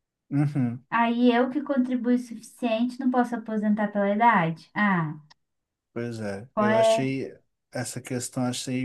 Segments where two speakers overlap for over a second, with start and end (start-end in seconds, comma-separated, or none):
none